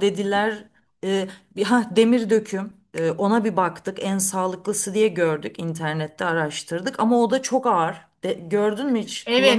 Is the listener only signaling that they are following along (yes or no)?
no